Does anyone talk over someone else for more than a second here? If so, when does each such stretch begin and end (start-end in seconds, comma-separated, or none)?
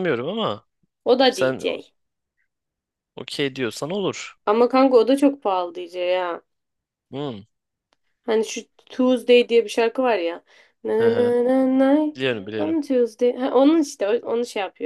none